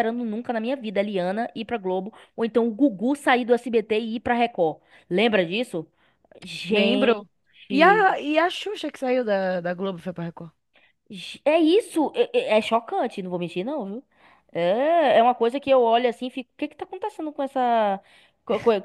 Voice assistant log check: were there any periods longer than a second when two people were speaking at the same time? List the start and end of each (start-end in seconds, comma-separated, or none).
none